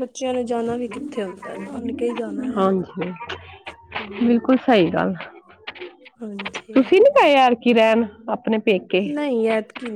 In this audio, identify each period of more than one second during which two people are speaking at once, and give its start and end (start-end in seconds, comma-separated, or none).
none